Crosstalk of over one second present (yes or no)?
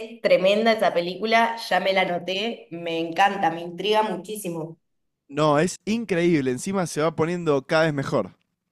no